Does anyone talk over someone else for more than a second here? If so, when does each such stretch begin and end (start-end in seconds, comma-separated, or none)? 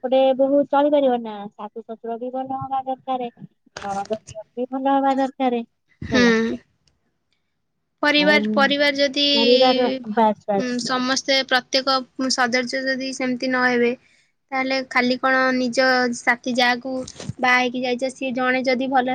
none